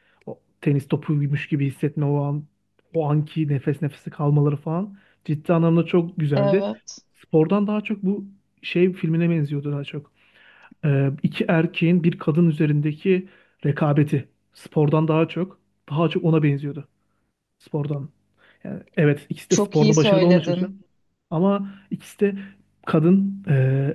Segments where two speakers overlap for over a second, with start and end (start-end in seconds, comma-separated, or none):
19.5-20.7